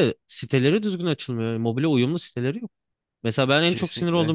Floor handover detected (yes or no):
no